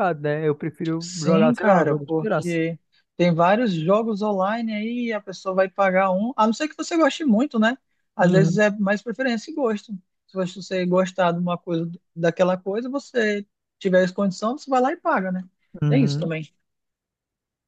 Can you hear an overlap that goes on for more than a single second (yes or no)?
yes